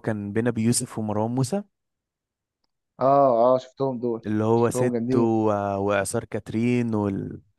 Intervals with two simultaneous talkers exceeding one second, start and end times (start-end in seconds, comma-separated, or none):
none